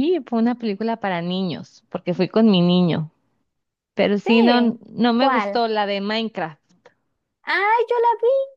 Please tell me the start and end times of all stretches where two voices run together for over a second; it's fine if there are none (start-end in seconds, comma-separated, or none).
4.2-5.6